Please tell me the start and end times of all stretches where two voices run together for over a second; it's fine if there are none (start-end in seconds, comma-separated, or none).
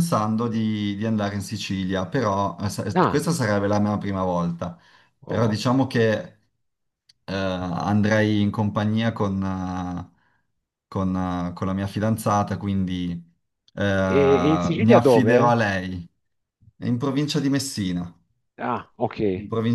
14.1-15.6